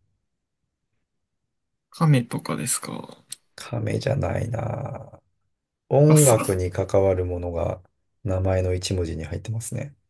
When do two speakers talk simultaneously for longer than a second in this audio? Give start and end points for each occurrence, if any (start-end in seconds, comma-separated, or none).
none